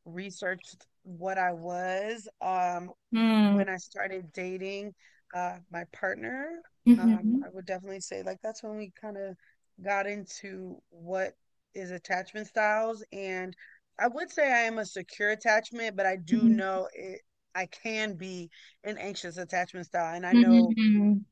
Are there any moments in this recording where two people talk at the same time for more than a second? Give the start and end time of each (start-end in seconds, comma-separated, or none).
none